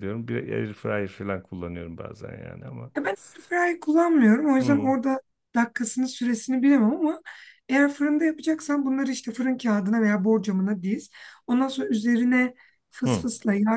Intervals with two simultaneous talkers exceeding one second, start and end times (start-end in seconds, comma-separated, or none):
none